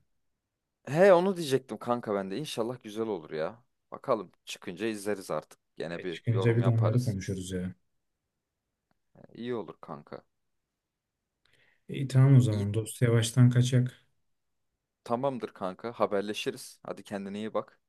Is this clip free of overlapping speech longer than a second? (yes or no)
no